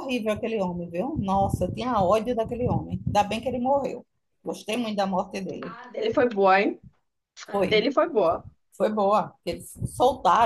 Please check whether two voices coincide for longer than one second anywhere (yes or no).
no